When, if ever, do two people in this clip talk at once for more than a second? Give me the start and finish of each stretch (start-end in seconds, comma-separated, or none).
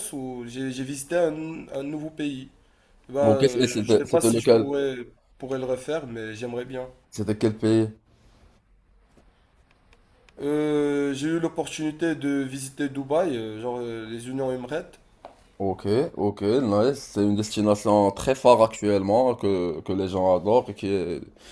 3.2-4.7